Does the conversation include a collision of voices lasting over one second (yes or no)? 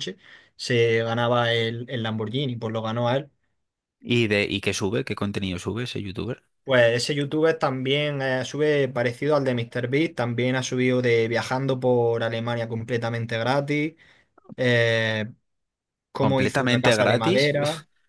yes